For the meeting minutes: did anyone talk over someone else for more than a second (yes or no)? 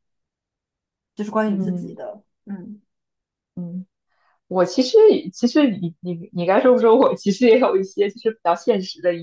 no